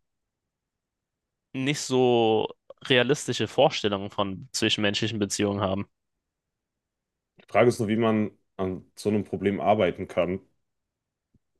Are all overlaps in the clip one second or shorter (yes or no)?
yes